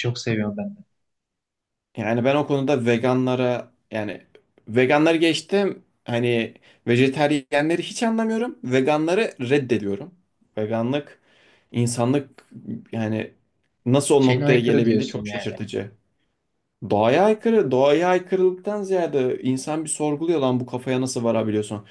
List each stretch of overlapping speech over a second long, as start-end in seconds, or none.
14.2-15.5